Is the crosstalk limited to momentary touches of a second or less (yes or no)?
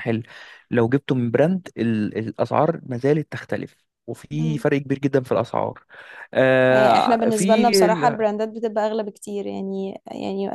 no